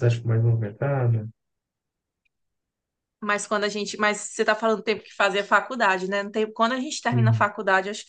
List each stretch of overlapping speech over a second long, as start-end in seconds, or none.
none